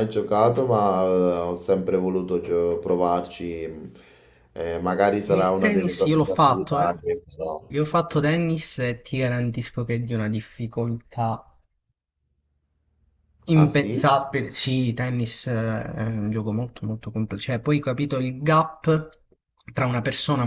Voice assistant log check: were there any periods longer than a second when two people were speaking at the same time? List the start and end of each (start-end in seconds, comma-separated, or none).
5.3-6.9